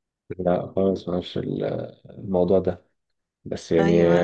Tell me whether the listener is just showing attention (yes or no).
yes